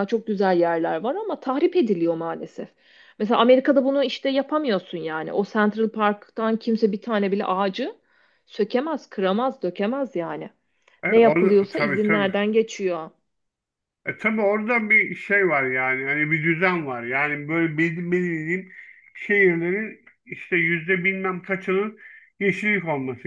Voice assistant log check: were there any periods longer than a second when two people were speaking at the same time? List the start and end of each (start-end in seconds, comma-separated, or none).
11.1-12.3